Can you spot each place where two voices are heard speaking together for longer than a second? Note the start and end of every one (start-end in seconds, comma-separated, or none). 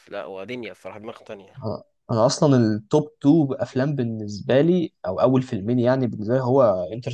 none